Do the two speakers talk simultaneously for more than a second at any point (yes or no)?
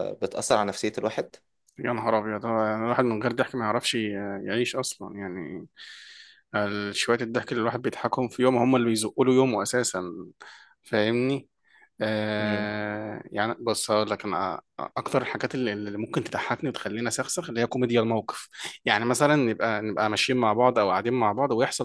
no